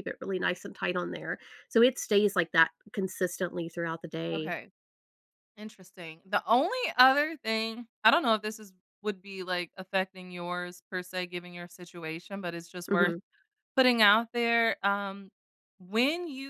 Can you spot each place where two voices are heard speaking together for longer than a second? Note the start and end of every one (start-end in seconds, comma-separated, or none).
none